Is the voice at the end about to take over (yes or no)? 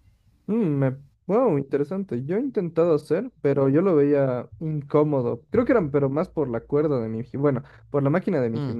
no